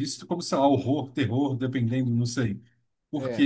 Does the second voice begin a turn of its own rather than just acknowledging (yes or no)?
no